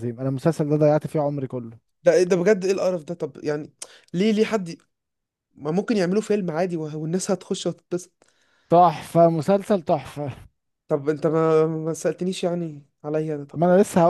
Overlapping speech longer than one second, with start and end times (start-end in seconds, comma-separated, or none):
none